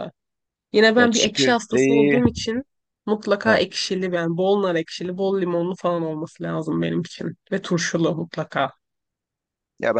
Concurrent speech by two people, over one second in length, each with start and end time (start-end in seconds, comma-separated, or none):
1.0-2.2